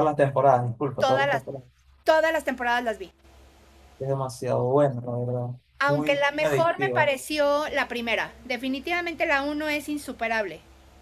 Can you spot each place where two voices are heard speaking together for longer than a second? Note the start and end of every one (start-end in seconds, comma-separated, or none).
5.9-7.1